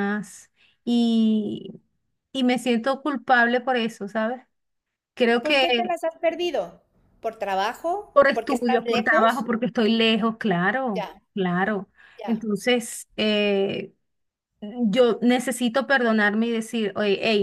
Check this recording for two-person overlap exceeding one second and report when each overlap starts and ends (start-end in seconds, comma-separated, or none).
8.1-9.5